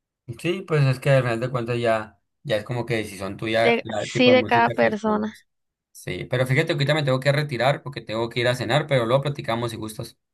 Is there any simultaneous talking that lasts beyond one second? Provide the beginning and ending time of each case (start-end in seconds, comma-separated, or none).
3.6-5.3